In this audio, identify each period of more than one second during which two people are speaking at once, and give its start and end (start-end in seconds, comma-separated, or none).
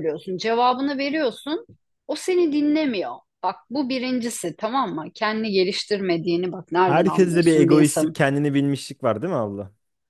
6.8-8.2